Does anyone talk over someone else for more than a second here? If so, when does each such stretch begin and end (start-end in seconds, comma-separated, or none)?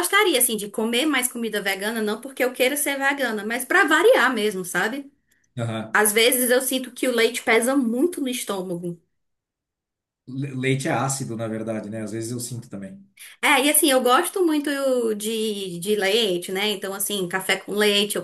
none